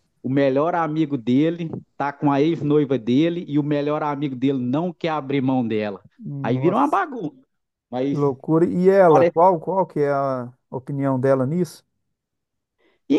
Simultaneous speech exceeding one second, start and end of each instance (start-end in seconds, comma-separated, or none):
none